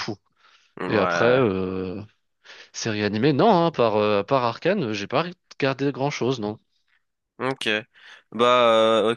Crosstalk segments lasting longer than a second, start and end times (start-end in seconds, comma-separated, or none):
none